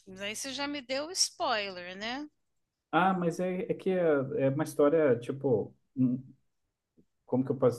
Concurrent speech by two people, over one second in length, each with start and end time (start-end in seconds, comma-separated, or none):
none